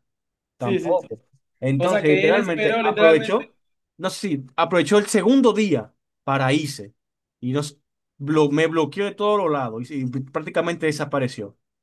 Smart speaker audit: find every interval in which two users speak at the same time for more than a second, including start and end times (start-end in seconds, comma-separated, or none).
1.8-3.5